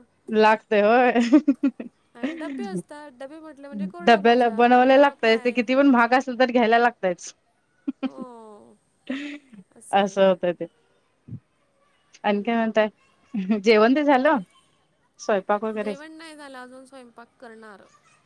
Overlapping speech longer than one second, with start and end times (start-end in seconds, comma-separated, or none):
4.0-5.6